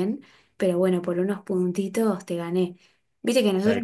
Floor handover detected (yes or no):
no